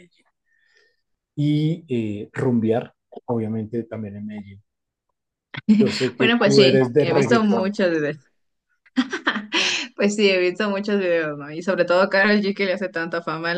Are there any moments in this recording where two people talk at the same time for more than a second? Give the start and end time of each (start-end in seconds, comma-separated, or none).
6.2-7.7